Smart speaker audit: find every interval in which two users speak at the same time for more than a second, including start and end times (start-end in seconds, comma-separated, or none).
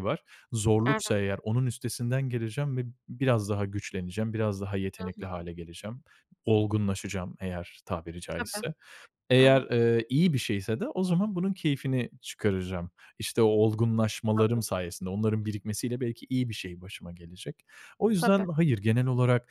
none